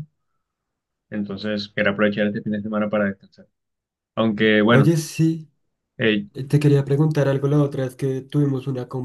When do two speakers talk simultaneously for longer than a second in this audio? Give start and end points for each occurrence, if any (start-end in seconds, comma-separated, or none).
none